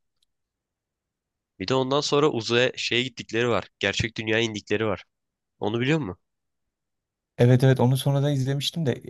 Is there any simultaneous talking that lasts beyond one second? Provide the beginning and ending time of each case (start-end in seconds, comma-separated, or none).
none